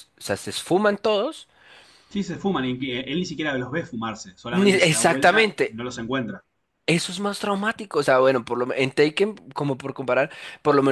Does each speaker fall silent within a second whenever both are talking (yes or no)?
no